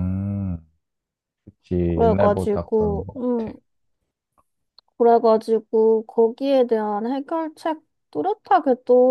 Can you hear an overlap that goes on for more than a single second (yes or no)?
yes